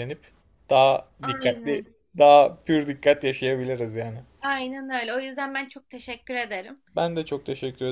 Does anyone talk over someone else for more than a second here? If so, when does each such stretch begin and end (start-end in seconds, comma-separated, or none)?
none